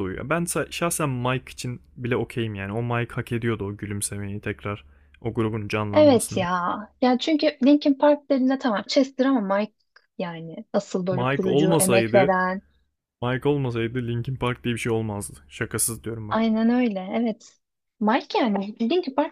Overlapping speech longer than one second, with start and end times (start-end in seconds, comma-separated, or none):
11.1-12.4